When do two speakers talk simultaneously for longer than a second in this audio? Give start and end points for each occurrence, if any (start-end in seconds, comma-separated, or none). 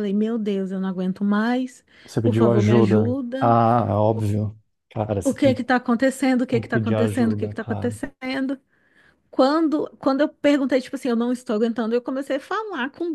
2.2-3.5, 6.5-8.0